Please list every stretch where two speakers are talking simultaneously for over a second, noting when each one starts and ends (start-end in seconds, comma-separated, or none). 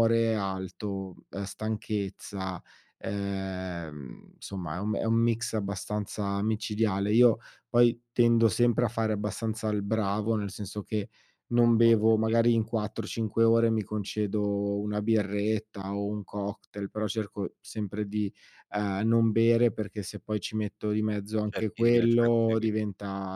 21.5-22.8